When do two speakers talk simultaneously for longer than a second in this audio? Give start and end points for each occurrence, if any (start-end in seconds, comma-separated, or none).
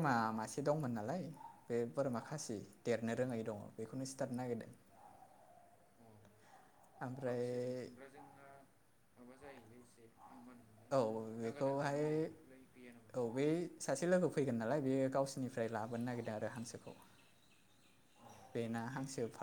none